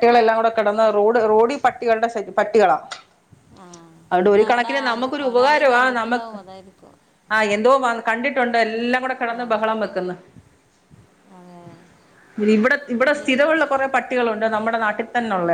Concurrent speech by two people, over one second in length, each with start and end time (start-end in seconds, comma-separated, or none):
4.1-6.3